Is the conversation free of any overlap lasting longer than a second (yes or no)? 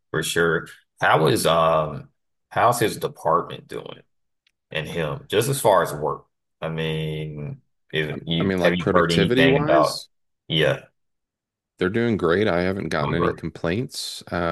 no